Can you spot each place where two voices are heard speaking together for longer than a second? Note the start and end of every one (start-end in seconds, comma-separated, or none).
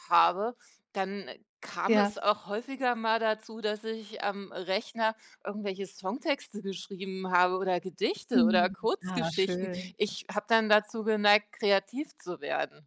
8.3-9.9